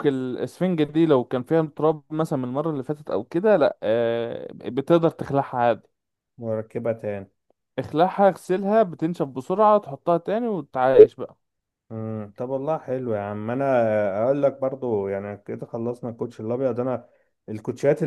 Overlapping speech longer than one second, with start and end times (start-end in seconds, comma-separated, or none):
none